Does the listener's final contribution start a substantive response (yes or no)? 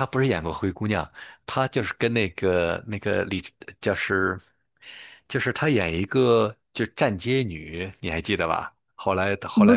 no